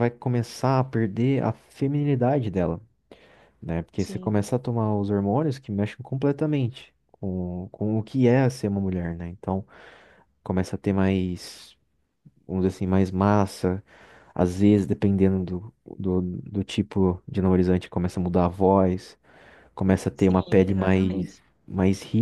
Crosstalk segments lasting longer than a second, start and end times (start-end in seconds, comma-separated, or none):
20.1-21.3